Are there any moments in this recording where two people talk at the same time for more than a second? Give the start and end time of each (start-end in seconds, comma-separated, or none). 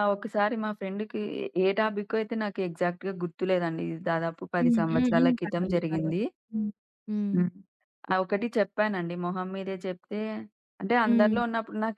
4.6-6.2